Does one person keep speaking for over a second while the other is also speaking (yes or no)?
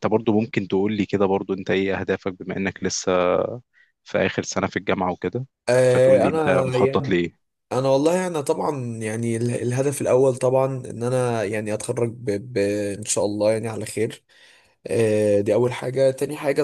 yes